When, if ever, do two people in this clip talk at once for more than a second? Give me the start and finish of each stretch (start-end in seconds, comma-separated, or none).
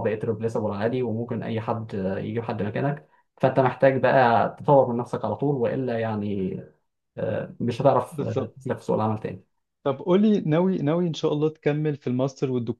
none